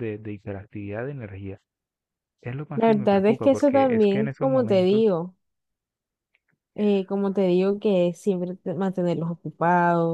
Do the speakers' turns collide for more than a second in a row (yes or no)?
yes